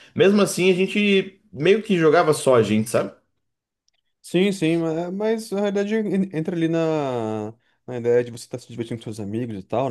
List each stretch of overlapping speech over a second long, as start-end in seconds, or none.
none